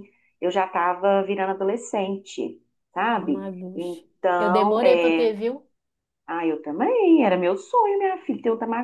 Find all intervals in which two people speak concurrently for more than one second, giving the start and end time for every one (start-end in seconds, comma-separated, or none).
3.1-5.3